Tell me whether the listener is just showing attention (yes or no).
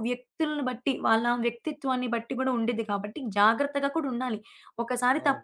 yes